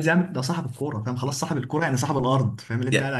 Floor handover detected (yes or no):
yes